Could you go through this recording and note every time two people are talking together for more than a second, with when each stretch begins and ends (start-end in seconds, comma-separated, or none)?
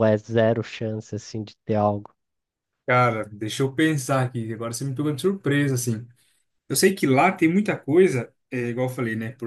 none